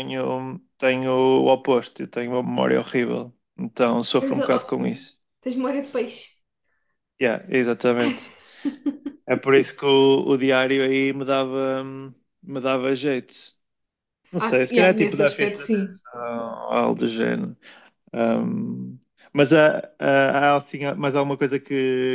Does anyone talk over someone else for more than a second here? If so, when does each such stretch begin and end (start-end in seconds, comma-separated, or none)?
14.4-16.0